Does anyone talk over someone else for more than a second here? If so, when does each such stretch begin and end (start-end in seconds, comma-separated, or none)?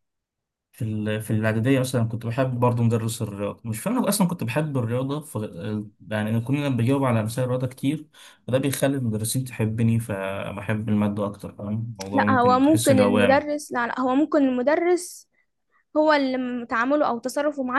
12.1-13.5